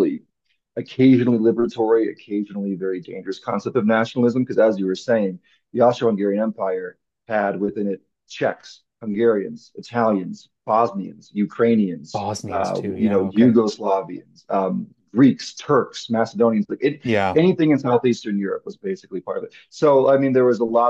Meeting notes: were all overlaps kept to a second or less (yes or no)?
no